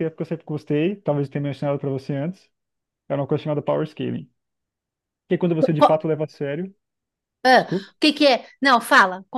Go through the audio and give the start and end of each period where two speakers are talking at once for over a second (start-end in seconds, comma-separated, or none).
none